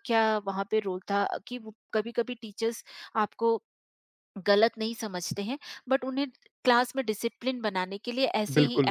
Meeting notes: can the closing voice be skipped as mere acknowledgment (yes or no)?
yes